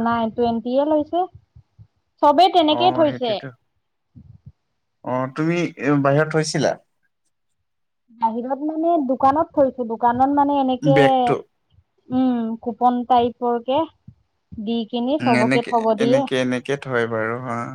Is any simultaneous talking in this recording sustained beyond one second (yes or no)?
no